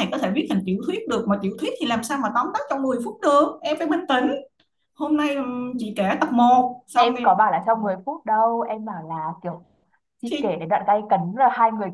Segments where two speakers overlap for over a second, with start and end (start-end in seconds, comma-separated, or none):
none